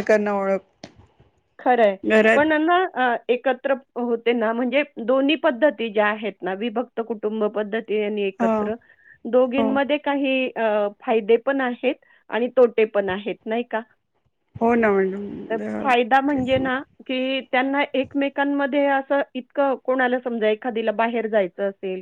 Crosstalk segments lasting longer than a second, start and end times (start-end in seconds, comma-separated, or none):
none